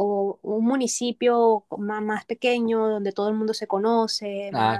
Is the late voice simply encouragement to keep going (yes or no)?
yes